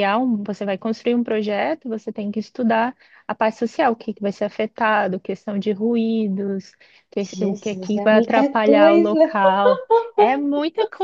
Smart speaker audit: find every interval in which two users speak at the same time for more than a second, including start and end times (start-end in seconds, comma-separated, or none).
7.3-9.2